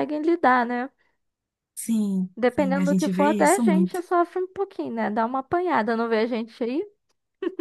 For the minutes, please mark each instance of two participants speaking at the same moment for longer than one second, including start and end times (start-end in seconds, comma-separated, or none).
2.4-4.0